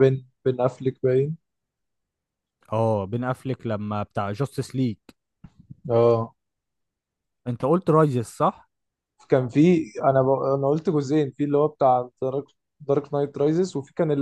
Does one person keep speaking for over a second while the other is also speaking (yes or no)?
no